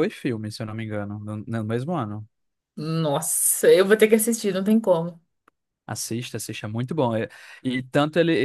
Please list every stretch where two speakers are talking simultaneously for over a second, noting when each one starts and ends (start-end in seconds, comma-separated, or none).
none